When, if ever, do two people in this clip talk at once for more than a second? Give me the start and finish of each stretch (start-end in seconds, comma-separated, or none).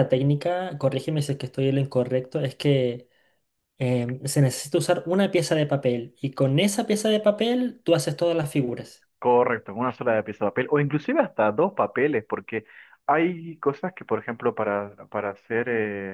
none